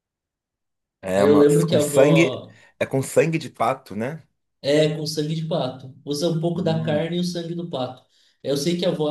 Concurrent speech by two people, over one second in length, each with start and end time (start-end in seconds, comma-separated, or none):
1.1-2.6